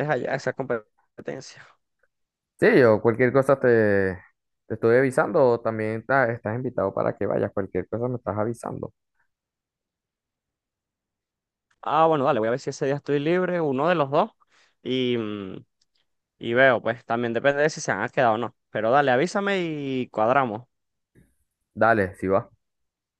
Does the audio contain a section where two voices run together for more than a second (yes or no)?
no